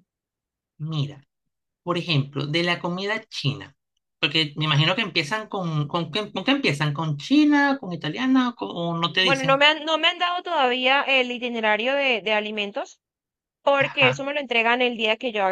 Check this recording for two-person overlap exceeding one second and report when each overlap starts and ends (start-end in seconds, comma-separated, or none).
none